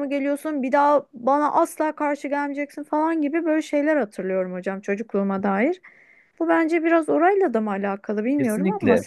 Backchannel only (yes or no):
no